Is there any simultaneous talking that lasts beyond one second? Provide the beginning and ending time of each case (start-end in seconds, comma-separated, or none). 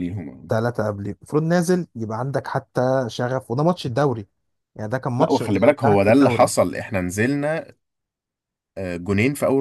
5.2-6.5